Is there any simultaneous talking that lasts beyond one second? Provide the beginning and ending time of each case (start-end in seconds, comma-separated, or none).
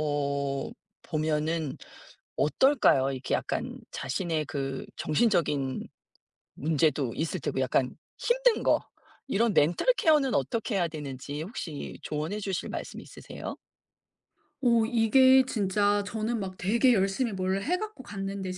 none